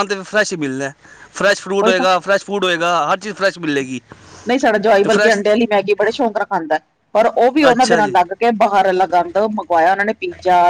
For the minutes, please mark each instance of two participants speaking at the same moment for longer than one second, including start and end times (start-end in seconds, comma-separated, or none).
none